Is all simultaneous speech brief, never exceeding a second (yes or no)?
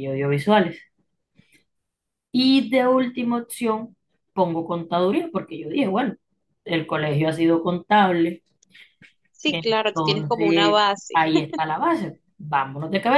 no